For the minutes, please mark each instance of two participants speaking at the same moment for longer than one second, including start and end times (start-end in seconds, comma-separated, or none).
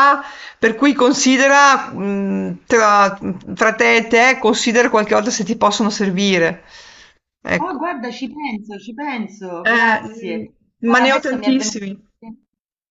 9.7-11.8